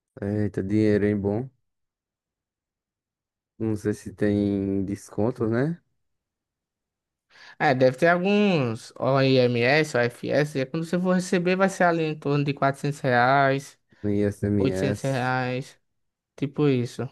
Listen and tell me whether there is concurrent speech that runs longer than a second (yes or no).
no